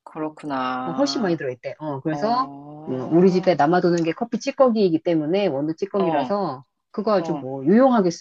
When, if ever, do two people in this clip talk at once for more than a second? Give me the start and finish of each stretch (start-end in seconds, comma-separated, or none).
none